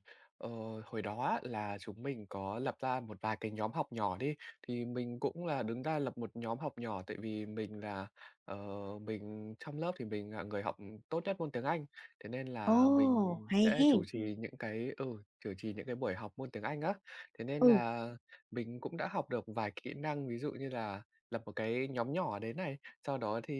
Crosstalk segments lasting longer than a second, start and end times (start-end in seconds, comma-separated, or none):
12.6-14.0